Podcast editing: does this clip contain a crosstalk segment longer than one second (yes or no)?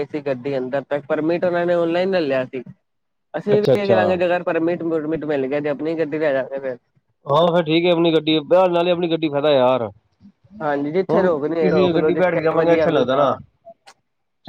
yes